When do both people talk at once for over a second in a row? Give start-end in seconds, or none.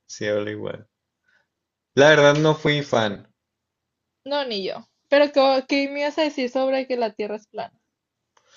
none